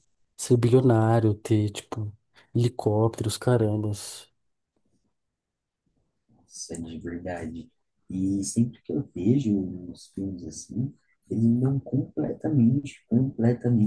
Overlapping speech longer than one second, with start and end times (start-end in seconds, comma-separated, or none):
none